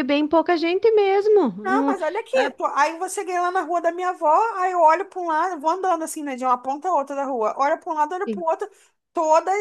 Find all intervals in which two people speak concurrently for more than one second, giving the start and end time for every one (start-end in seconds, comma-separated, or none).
none